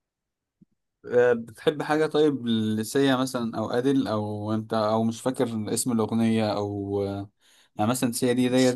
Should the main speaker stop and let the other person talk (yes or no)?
no